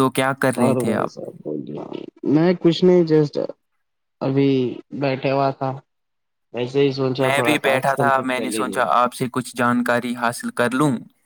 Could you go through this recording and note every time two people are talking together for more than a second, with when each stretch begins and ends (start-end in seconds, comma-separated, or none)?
7.2-8.8